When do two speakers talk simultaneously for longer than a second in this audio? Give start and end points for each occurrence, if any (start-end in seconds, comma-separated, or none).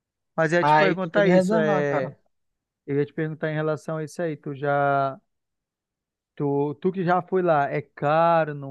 0.6-2.1